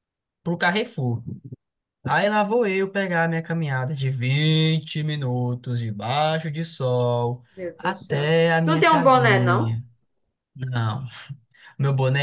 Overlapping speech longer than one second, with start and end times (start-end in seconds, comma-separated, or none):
7.5-9.8